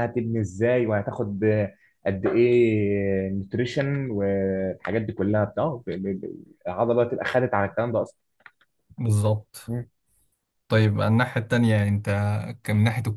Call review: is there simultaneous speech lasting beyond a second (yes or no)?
no